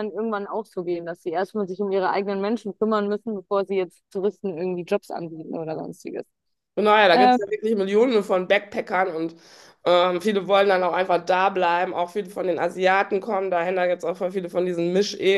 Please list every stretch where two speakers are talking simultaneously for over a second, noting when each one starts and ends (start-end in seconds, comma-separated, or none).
none